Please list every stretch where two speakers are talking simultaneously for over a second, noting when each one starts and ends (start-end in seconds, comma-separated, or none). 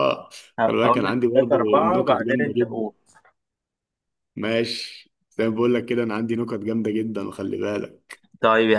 0.7-2.8